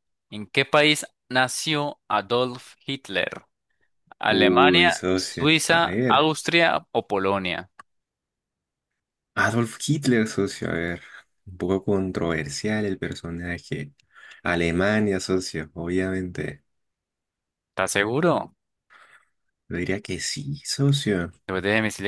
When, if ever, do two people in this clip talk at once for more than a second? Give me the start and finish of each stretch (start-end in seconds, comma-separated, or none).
4.3-6.3